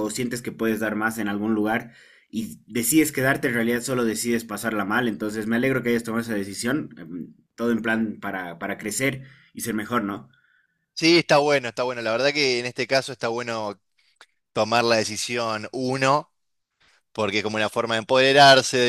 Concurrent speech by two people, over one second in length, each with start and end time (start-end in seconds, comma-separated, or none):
none